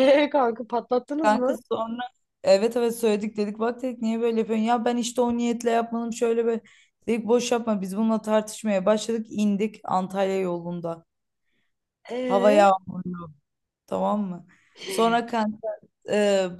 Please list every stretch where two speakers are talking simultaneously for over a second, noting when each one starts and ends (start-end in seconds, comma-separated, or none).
none